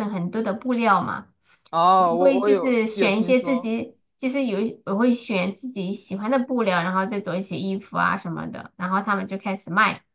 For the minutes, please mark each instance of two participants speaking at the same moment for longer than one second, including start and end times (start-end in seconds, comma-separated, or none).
2.1-3.7